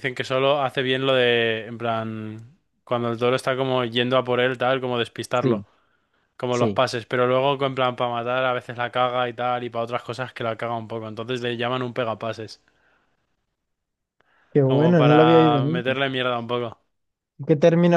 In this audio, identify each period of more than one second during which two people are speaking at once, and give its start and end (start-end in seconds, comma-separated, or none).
14.7-15.9